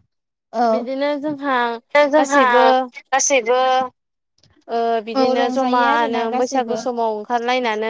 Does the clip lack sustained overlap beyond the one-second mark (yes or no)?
no